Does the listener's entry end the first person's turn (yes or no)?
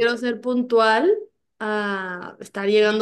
yes